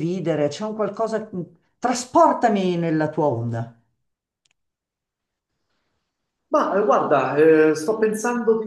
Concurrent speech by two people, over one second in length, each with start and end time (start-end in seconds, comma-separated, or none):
none